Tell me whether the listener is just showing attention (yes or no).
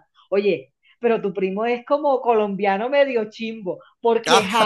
yes